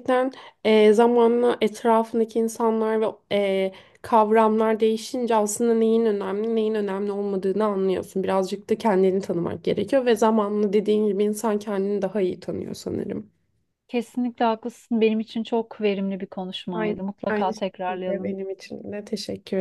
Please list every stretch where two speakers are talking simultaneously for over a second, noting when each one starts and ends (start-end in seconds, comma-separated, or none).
16.7-18.4